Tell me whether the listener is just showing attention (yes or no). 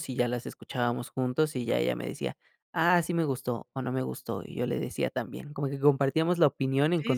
no